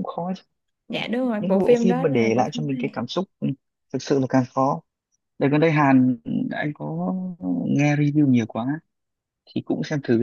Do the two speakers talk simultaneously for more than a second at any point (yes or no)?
yes